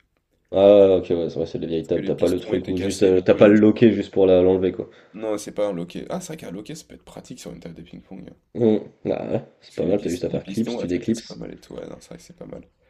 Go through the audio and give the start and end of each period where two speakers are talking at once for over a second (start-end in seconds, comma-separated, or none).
1.7-3.6, 9.7-11.4